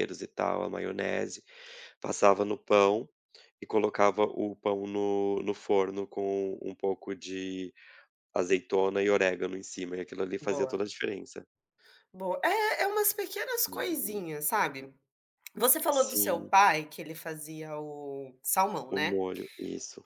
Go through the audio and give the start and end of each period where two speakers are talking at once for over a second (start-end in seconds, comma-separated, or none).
none